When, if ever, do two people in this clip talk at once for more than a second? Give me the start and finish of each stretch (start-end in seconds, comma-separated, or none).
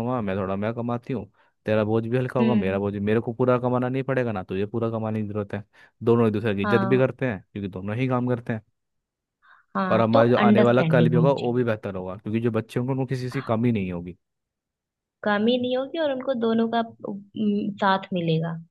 9.9-11.6